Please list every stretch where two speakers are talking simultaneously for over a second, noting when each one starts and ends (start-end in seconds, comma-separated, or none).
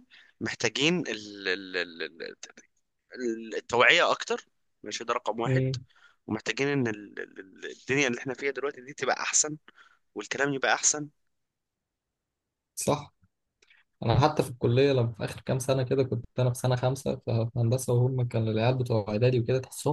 none